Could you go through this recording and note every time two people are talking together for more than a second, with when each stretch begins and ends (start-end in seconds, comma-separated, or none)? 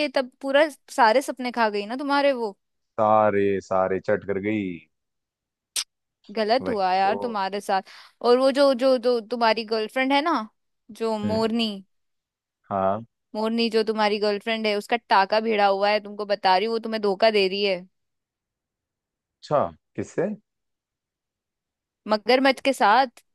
none